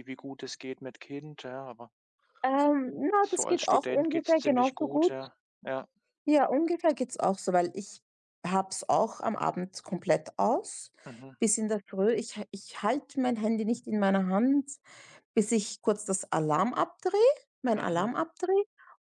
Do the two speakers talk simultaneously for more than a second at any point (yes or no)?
yes